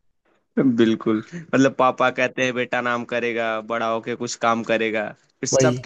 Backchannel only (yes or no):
yes